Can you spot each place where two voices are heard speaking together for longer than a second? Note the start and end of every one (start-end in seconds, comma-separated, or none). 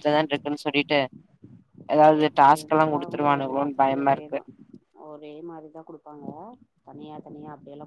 2.2-4.3